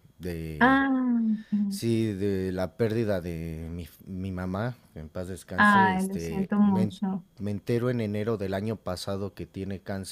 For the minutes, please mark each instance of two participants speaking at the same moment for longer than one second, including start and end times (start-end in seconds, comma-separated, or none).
5.6-6.9